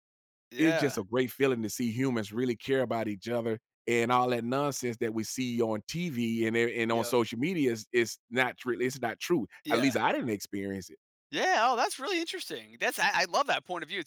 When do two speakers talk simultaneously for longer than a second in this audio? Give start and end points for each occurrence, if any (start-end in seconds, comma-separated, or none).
none